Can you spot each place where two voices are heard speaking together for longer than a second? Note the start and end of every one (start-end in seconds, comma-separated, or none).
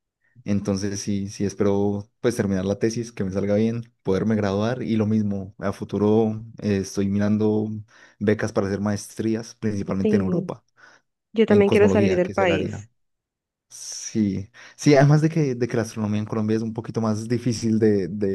11.5-12.9